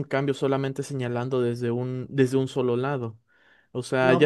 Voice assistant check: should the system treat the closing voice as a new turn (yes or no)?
no